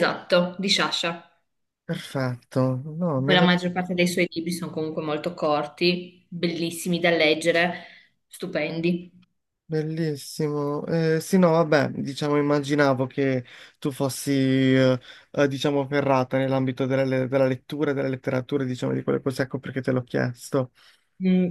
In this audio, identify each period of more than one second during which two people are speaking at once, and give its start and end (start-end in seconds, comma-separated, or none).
none